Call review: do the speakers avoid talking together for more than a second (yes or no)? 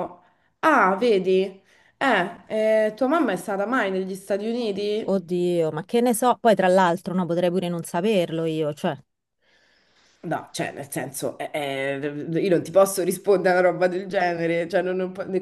yes